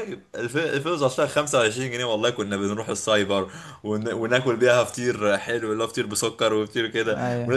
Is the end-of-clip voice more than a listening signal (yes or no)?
no